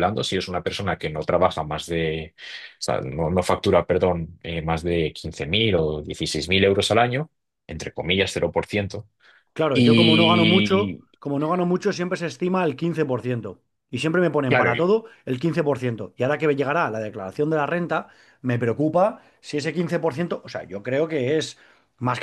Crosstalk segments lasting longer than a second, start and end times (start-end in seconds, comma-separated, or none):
9.7-11.1